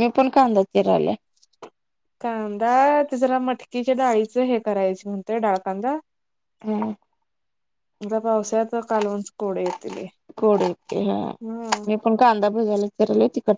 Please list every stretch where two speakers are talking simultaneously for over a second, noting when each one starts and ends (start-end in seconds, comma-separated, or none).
none